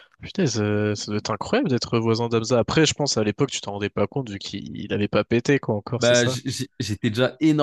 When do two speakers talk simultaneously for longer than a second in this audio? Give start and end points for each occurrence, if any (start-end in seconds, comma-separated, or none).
none